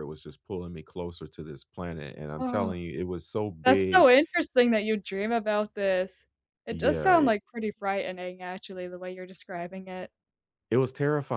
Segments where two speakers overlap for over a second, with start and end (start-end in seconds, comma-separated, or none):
none